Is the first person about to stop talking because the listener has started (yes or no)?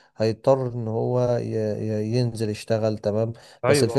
no